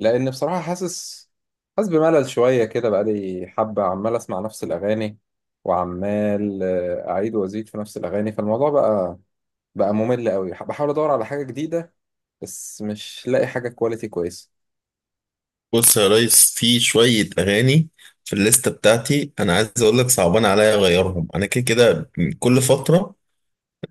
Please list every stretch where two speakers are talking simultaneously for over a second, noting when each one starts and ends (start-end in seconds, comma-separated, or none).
none